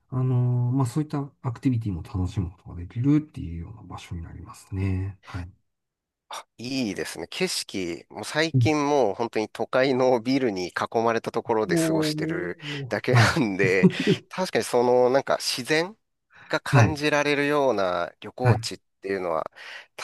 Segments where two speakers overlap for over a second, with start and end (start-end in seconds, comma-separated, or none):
11.7-13.4